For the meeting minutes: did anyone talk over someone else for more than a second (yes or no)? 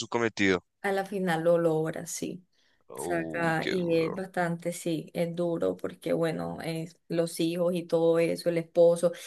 yes